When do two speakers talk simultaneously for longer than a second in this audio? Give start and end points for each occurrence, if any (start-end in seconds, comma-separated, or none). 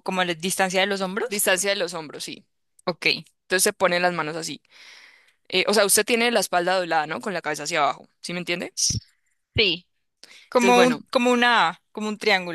none